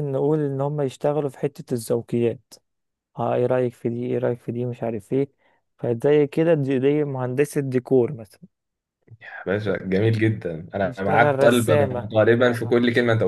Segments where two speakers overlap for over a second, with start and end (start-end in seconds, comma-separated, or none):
10.8-12.1